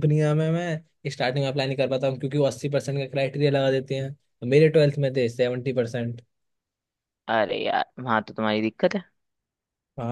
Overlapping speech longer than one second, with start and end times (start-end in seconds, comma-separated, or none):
none